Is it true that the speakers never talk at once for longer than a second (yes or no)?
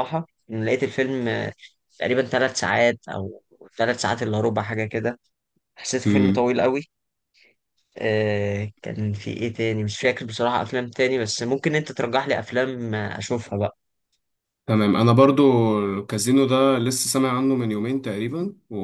yes